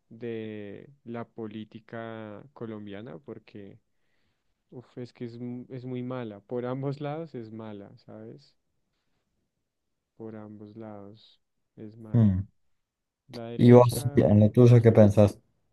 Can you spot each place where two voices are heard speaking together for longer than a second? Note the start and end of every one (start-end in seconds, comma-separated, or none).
13.6-15.0